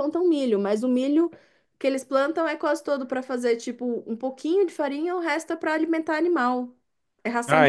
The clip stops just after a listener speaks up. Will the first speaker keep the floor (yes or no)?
no